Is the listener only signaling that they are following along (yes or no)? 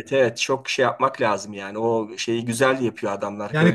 no